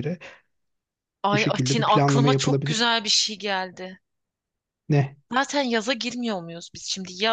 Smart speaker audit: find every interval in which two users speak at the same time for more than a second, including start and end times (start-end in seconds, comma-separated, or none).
1.3-3.0